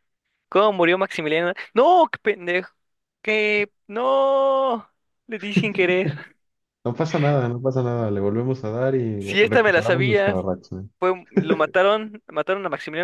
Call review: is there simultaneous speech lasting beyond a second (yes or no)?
yes